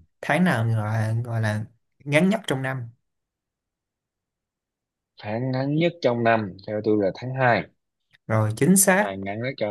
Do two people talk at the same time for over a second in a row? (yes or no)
no